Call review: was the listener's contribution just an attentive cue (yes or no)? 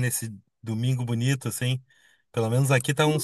no